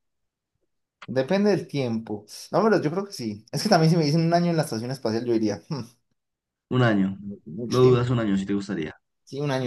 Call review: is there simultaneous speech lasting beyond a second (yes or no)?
no